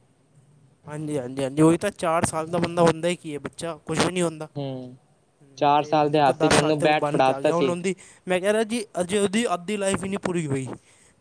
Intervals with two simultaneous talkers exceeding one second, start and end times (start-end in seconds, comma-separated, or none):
5.8-7.7